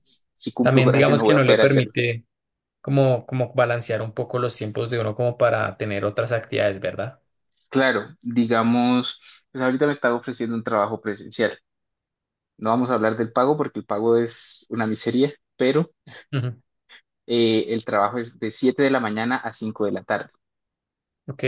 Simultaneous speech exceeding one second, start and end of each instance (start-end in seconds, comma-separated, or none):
0.6-1.9